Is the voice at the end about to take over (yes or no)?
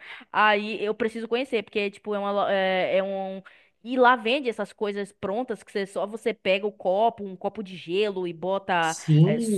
yes